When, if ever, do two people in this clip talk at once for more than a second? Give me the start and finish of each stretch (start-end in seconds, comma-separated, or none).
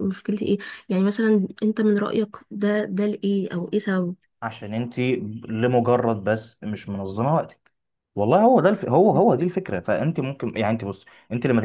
none